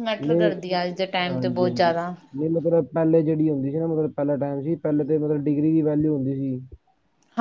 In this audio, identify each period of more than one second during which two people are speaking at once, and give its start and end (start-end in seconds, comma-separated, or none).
none